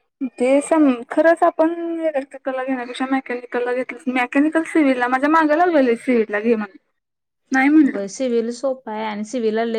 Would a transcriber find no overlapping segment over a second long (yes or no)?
yes